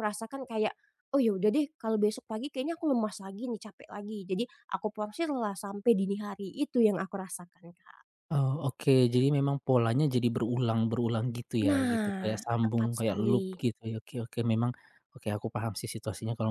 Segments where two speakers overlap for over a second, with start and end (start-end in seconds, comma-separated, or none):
11.7-13.6